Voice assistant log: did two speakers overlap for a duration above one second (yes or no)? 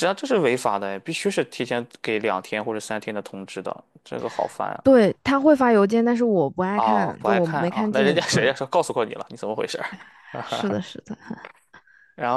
yes